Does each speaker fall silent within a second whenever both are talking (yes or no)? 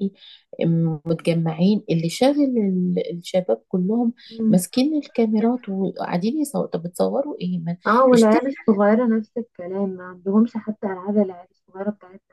yes